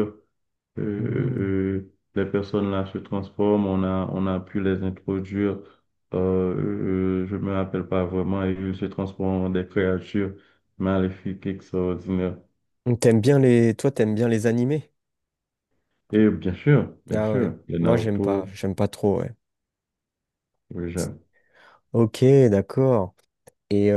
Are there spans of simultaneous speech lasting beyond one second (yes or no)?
yes